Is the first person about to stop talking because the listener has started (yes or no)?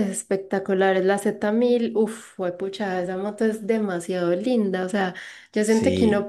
no